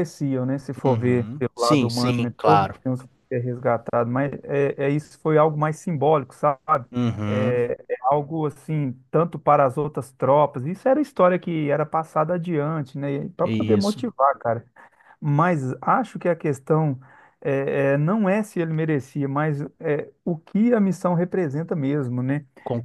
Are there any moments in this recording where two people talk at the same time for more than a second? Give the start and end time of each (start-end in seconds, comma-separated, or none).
0.8-2.8